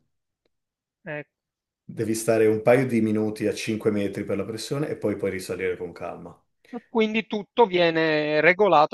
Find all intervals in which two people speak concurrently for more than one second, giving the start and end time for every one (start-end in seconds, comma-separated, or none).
none